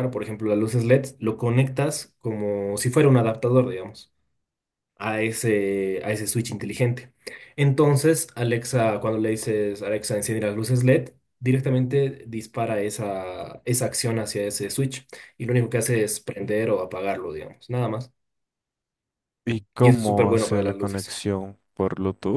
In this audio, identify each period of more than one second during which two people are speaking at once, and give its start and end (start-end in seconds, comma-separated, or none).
19.8-21.1